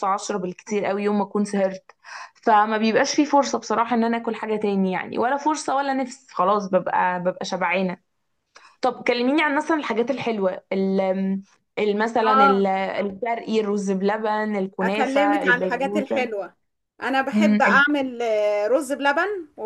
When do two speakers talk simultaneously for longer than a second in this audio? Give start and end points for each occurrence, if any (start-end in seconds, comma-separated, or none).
14.8-16.3